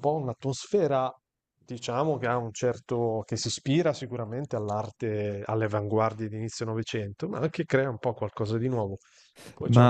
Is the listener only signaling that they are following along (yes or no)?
no